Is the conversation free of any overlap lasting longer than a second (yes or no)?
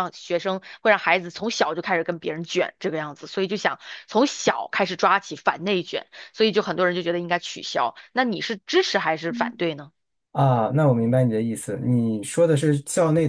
yes